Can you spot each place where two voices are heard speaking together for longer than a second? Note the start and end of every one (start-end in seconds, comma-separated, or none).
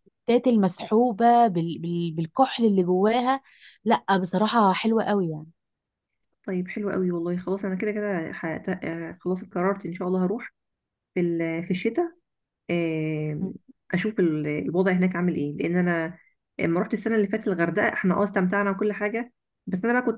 none